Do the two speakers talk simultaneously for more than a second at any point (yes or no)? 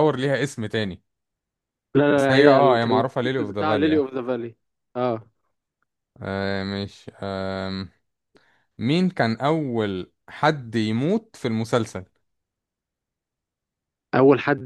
yes